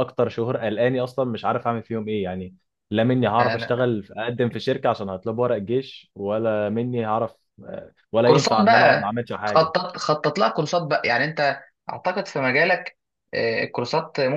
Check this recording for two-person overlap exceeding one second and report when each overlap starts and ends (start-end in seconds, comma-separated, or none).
8.2-9.7